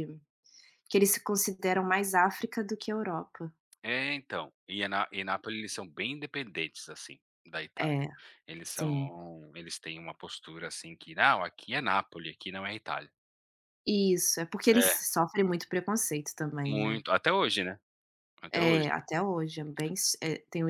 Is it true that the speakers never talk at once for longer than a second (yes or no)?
yes